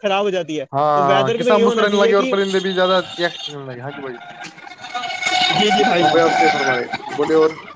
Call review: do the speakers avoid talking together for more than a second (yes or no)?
no